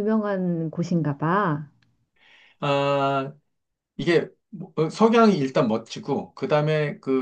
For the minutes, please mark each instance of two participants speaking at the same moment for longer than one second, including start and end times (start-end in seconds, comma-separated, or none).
none